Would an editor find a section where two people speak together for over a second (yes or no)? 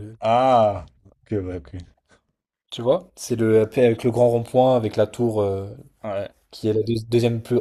no